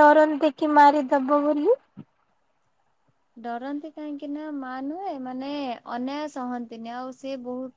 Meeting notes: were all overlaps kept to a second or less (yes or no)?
yes